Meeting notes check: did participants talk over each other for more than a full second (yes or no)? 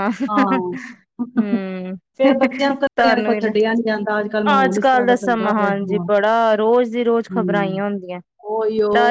yes